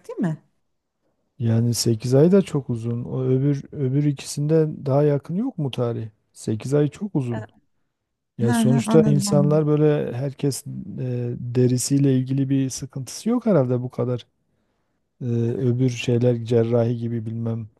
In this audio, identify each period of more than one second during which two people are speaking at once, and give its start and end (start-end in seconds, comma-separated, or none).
8.4-9.7